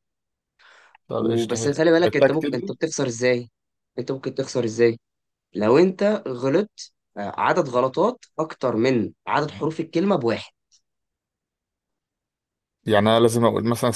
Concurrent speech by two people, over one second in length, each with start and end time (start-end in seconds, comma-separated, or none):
1.1-2.7